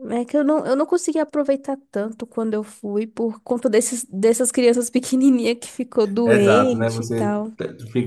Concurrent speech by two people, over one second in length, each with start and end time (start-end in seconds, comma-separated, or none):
6.2-7.5